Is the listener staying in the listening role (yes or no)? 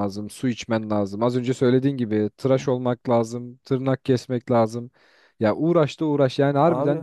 yes